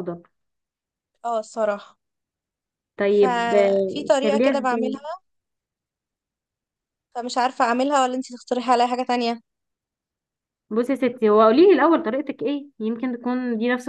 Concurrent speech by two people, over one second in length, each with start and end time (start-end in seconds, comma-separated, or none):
3.1-5.0